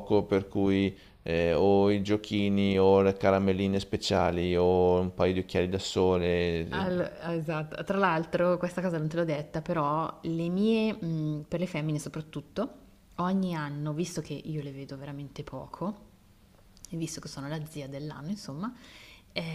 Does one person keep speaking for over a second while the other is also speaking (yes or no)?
no